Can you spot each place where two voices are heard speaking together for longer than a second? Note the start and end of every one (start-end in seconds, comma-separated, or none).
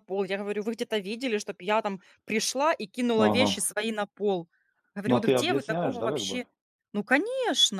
5.1-6.4